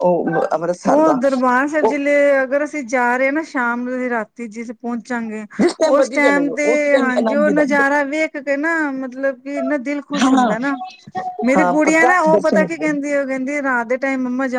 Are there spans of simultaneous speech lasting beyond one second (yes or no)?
yes